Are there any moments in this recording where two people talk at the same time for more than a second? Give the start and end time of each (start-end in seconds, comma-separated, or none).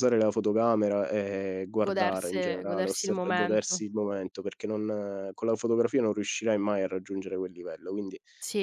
1.8-3.8